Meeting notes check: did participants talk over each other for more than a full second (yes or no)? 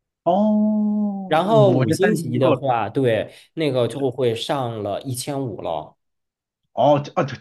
yes